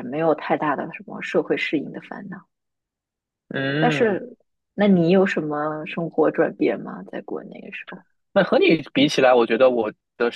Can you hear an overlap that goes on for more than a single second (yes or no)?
no